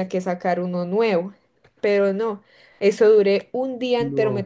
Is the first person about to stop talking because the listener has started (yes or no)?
no